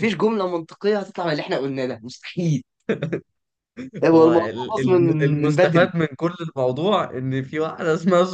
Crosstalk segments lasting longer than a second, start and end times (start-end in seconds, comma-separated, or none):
4.1-5.9